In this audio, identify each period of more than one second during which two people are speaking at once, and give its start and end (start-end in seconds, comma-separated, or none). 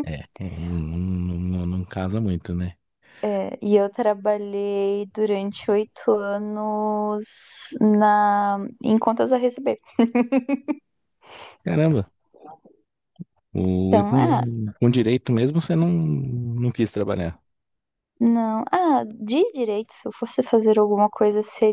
none